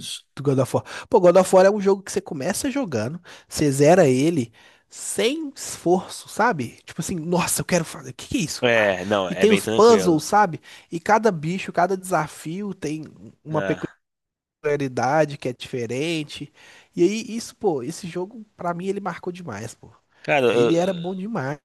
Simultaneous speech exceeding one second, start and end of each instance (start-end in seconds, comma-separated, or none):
8.6-10.2